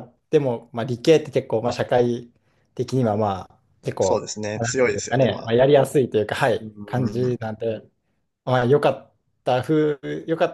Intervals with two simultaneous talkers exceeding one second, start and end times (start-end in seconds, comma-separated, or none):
4.0-5.5